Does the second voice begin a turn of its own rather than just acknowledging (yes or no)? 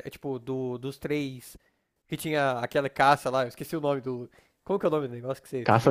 yes